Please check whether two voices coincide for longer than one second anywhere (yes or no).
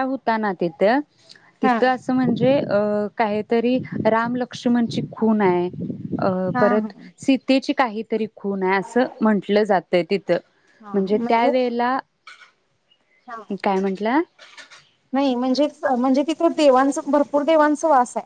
no